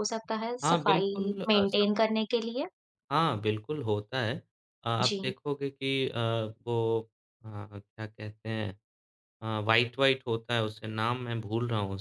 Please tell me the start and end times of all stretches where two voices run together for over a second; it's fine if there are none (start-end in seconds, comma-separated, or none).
0.6-2.0